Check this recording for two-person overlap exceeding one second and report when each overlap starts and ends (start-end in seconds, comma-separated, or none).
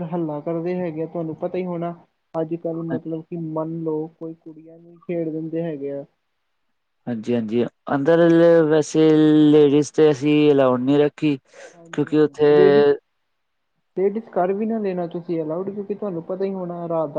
none